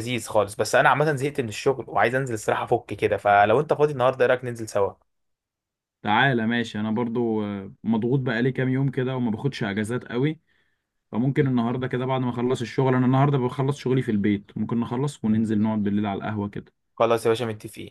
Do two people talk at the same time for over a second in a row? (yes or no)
no